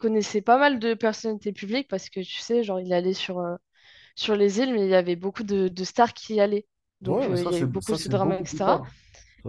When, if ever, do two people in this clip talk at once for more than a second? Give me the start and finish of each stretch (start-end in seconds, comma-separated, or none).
7.0-8.8